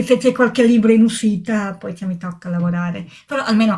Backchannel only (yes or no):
yes